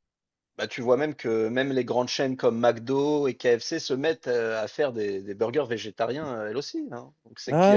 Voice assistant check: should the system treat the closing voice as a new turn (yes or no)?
yes